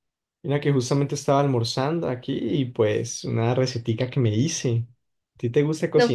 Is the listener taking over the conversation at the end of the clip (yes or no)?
yes